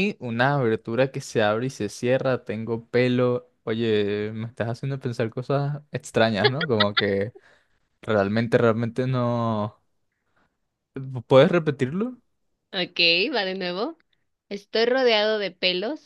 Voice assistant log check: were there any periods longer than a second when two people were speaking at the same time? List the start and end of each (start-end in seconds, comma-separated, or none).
none